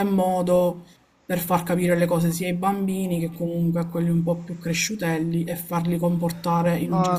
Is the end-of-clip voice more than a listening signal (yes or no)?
yes